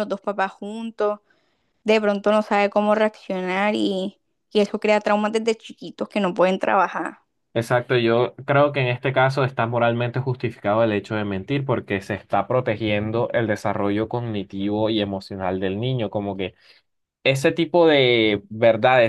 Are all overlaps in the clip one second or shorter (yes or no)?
yes